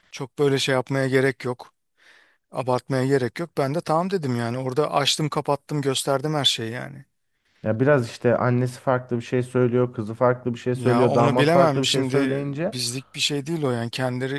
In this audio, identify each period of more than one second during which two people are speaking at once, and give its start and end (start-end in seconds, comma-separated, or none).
10.7-12.8